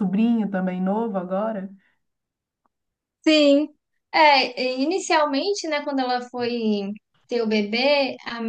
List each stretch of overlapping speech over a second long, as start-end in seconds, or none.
none